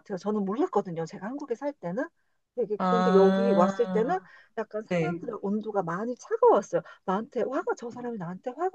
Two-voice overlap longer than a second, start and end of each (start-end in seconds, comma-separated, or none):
2.8-4.1